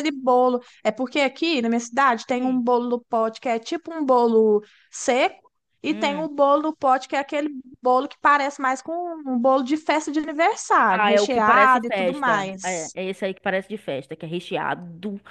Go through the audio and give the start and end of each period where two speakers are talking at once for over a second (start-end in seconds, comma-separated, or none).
10.9-13.0